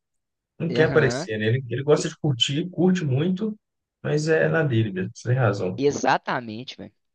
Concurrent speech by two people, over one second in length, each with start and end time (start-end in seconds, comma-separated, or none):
none